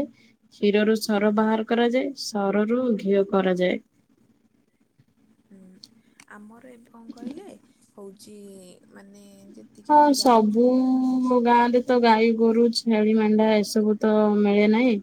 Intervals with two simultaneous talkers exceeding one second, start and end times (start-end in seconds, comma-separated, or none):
none